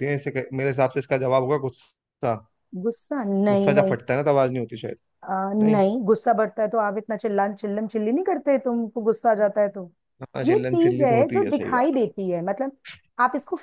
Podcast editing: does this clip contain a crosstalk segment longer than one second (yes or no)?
yes